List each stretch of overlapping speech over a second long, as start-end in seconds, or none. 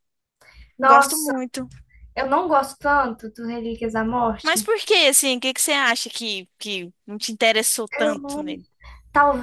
none